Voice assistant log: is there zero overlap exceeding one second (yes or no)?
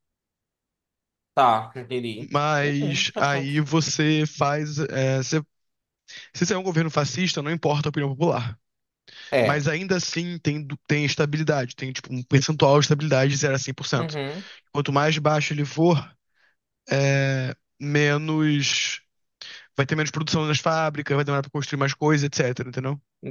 no